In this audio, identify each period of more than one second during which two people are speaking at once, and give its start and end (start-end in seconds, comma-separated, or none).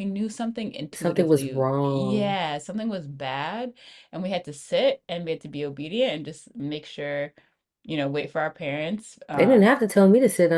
0.9-2.4